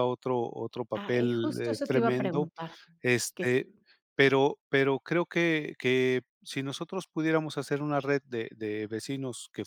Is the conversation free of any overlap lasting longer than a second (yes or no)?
no